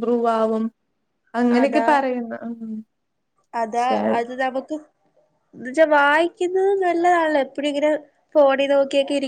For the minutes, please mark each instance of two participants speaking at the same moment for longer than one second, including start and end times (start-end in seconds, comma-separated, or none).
none